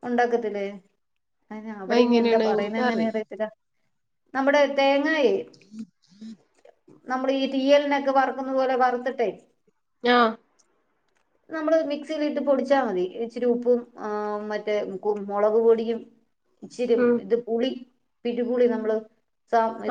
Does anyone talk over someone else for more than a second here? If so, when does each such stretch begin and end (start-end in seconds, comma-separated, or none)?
1.9-3.2